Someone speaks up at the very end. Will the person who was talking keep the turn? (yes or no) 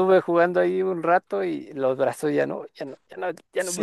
no